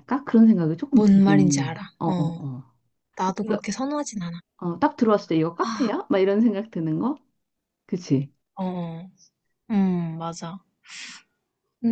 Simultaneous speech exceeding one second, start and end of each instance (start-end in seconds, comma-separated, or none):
0.9-2.4